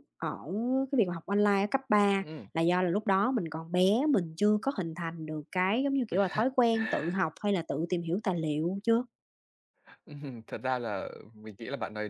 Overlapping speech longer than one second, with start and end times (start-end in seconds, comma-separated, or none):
none